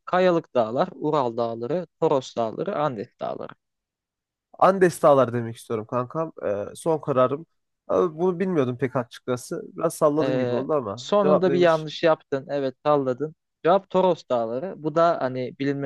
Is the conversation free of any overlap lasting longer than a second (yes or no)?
no